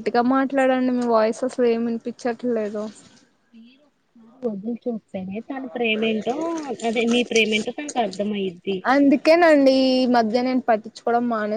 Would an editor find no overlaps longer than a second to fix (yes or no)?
yes